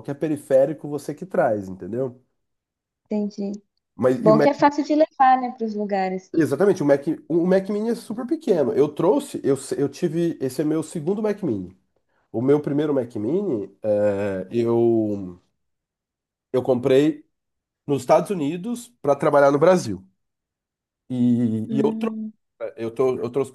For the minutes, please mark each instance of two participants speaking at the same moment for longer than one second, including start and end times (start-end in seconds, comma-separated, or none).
none